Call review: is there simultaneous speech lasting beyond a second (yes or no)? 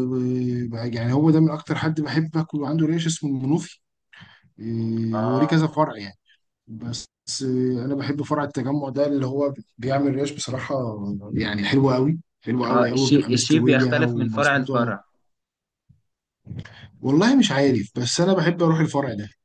yes